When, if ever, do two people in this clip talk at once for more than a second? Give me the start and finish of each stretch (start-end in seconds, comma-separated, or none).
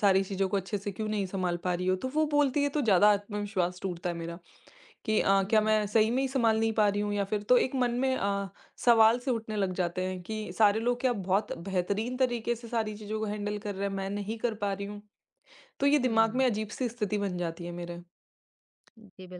5.4-6.6